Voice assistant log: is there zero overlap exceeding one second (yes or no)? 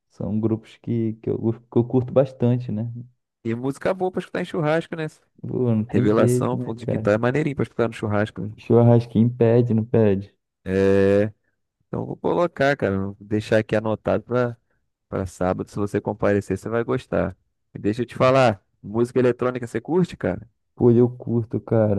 no